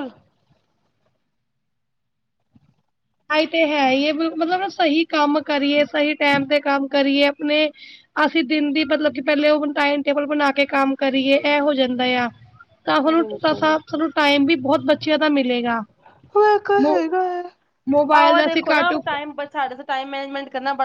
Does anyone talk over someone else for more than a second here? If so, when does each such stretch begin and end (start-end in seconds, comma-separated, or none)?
none